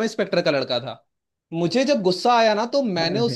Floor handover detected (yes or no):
no